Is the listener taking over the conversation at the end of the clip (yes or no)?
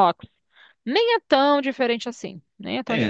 yes